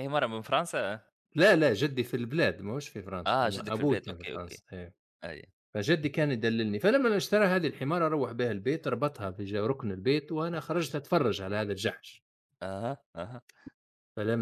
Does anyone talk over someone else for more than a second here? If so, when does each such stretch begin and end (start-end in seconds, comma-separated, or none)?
3.3-4.6